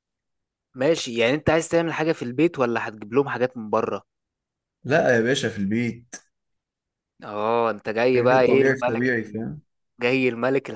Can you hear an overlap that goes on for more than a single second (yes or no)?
yes